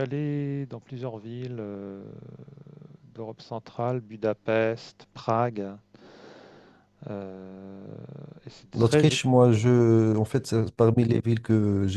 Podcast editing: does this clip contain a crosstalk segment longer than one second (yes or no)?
no